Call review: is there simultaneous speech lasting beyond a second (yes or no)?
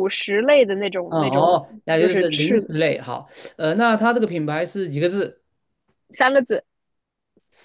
yes